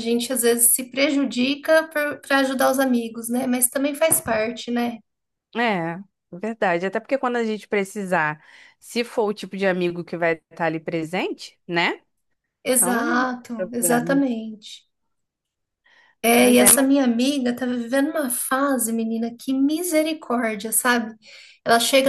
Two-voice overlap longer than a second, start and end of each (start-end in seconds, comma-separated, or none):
12.8-14.2